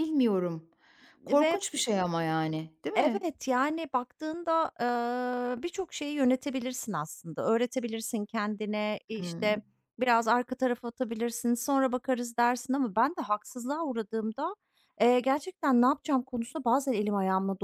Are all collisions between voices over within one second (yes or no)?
yes